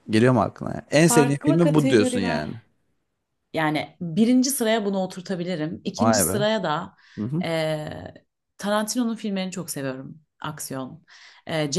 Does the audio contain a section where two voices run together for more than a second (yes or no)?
yes